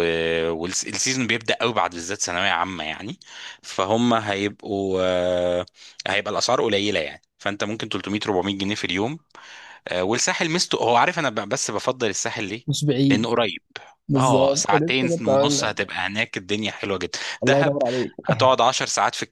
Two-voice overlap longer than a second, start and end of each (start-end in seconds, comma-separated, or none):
14.2-15.7